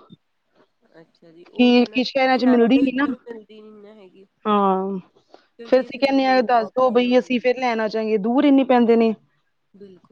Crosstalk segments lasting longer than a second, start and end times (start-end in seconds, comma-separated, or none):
5.7-7.7